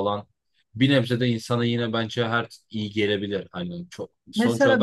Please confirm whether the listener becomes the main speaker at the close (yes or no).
yes